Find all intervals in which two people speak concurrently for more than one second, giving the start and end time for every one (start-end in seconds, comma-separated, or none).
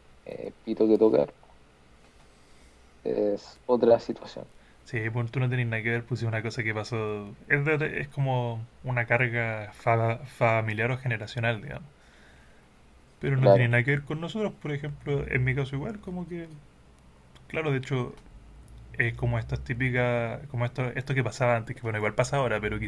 none